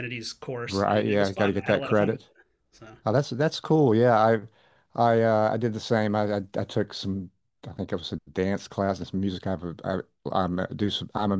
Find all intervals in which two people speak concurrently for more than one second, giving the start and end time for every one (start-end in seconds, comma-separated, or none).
0.7-2.3